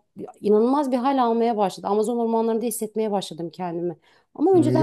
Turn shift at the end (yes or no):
yes